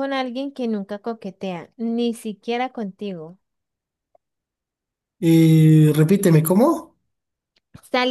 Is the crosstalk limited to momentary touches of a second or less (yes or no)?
yes